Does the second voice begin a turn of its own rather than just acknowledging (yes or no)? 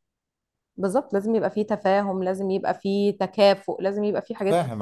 yes